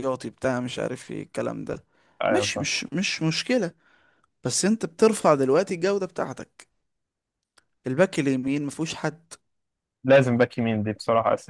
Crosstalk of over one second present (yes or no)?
no